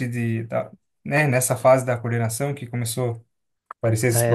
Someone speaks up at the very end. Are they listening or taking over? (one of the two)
taking over